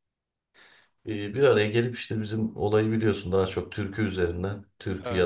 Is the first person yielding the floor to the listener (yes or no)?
no